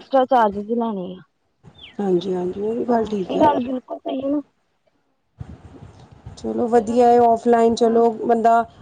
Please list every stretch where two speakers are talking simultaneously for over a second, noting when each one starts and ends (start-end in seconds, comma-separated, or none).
none